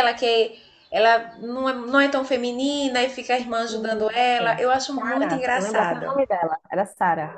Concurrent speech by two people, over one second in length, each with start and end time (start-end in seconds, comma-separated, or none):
4.1-6.2